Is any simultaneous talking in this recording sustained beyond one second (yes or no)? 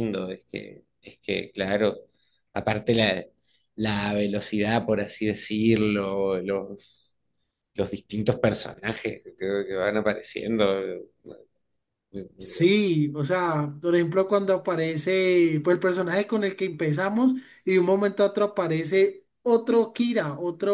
no